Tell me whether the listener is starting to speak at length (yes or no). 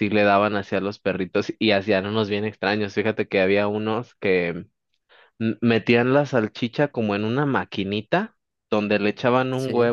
no